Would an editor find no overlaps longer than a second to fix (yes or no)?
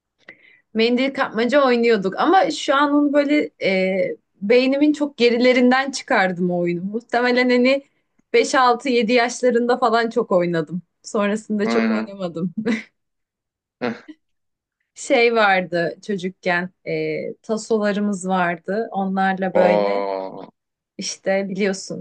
yes